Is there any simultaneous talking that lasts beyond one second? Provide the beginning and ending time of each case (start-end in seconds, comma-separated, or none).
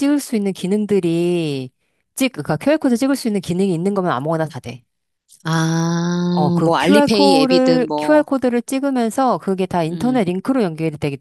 6.3-8.3